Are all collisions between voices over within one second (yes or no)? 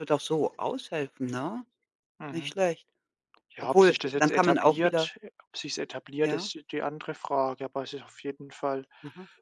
no